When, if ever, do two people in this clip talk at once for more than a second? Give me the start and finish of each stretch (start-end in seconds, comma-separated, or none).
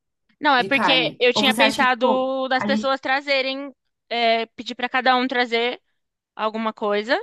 0.6-2.9